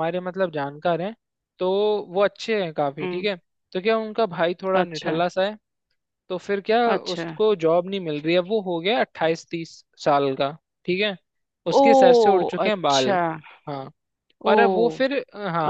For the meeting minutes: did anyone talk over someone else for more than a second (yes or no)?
yes